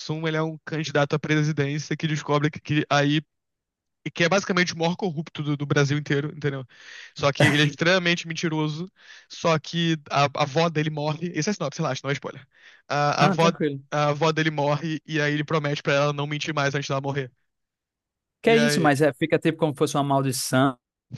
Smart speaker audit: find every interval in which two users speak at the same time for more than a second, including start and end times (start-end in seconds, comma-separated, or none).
none